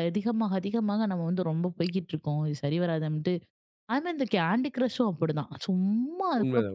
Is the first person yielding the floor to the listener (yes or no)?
yes